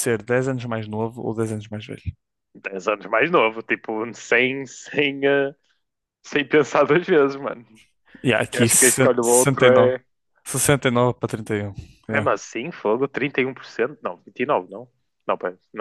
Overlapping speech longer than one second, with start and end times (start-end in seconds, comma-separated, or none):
8.5-10.0